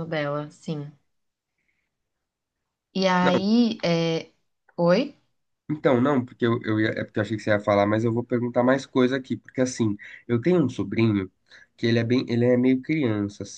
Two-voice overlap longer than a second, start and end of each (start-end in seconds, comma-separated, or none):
none